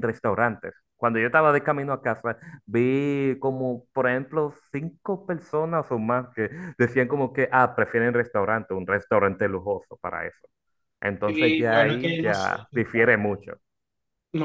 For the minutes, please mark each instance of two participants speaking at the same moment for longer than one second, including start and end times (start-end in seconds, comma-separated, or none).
11.2-12.7